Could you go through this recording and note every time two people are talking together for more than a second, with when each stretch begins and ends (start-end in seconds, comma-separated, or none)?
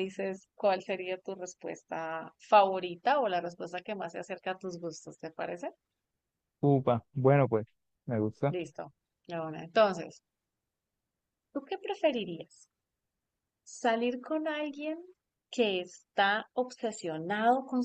none